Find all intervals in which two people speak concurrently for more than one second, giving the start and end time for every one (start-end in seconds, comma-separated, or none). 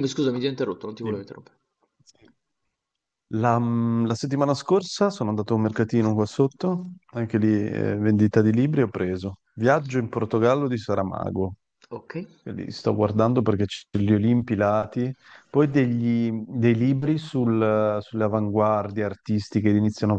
none